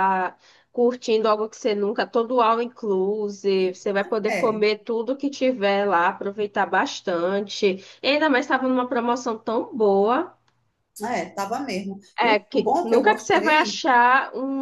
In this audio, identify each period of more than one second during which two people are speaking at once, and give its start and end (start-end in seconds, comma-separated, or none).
12.2-13.8